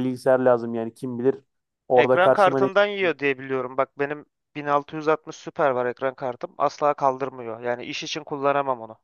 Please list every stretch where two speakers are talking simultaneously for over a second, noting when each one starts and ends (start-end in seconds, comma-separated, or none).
1.9-3.2